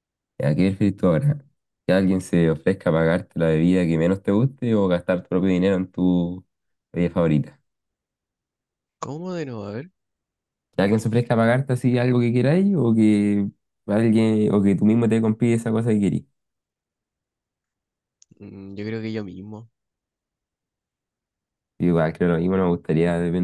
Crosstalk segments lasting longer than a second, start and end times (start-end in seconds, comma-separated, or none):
none